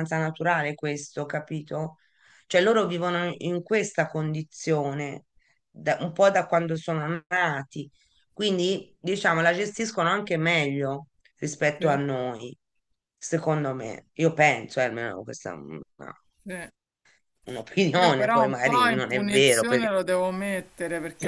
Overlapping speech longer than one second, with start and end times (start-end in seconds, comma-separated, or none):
18.0-19.9